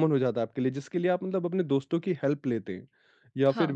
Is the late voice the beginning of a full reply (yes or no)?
no